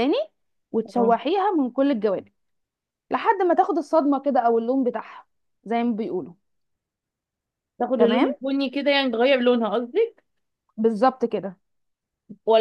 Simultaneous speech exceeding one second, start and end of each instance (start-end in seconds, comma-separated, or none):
none